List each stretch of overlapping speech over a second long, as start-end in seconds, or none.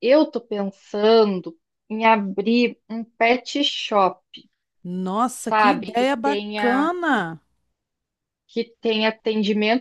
5.4-6.9